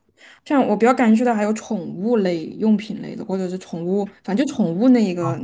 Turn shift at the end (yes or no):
yes